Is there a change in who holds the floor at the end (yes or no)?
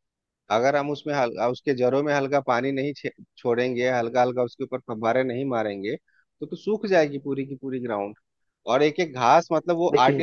no